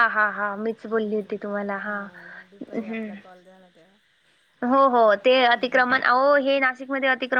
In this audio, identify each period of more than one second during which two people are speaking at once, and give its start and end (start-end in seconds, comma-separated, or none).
0.8-2.1